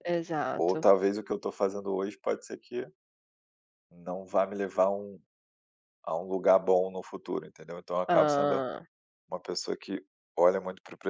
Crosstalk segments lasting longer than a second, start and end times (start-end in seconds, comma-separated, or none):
none